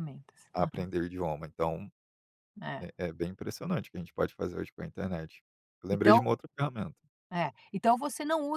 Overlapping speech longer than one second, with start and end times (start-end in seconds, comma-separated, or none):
none